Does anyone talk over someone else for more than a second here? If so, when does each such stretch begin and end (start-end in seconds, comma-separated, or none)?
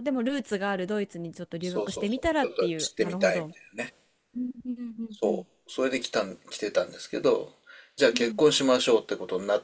1.6-3.5